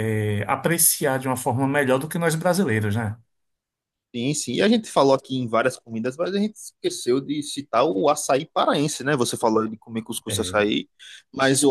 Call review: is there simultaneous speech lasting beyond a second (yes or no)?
no